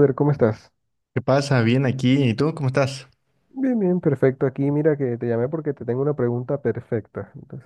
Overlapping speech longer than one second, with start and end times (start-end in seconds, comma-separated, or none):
none